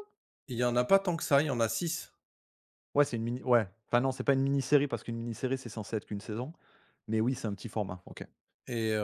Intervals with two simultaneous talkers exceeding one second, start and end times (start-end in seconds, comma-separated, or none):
none